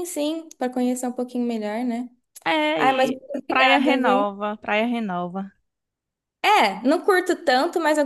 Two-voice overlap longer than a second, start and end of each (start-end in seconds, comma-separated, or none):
2.8-4.2